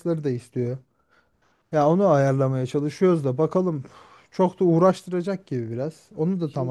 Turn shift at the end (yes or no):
yes